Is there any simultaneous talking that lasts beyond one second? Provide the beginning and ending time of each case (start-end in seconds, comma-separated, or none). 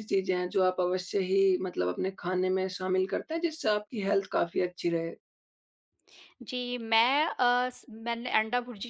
none